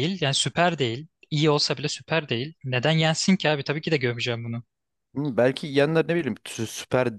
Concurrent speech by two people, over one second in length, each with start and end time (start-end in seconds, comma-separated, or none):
none